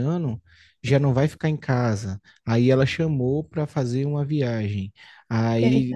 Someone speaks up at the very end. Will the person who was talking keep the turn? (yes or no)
yes